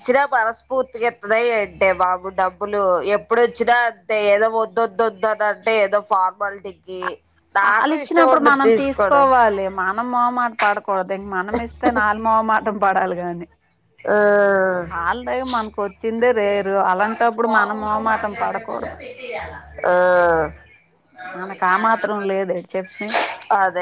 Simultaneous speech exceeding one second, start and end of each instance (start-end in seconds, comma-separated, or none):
7.6-9.3